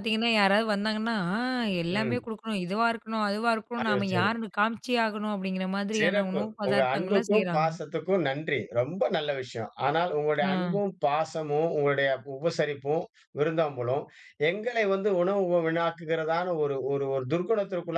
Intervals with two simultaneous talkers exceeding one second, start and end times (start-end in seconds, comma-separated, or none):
6.0-7.7